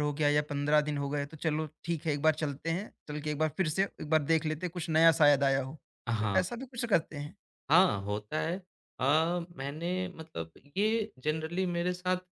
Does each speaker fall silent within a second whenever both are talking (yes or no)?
yes